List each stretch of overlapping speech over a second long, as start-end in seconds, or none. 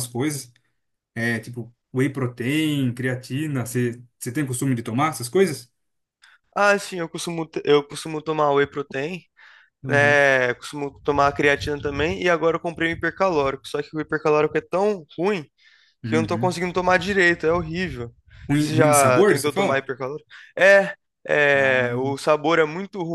18.5-19.9